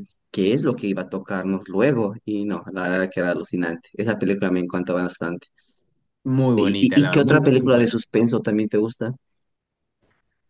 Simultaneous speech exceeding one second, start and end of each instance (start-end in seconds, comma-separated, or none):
6.5-8.0